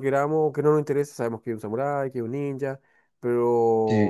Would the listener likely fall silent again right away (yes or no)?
yes